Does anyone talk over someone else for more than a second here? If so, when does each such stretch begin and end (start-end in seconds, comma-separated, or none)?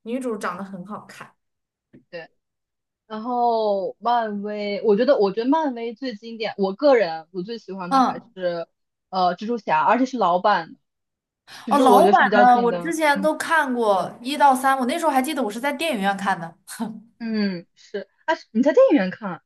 11.7-13.3